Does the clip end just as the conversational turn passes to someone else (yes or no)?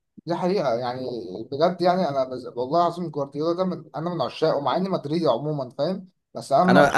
yes